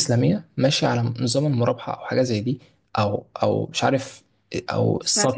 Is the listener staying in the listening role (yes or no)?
yes